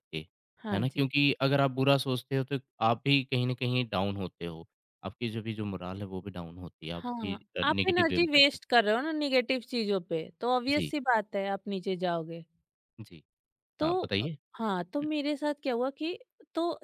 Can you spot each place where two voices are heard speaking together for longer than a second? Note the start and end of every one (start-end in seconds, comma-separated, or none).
7.0-8.8